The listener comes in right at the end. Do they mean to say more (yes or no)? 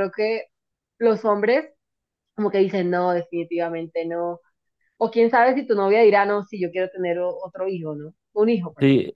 yes